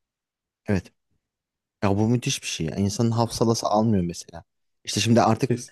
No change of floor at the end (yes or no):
yes